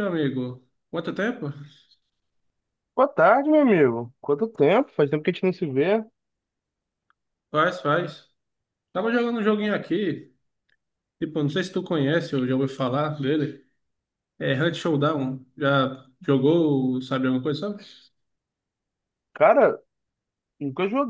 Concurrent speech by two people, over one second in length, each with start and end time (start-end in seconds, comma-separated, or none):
none